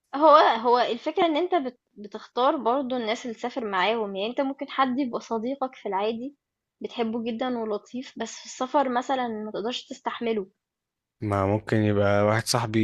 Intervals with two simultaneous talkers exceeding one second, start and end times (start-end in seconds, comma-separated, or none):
none